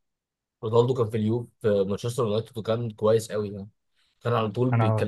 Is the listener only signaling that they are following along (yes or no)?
yes